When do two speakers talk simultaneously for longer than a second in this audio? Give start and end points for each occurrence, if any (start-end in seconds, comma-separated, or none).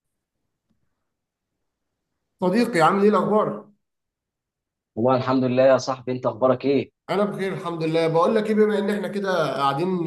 none